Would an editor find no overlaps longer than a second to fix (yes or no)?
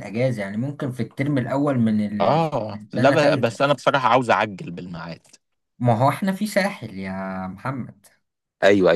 no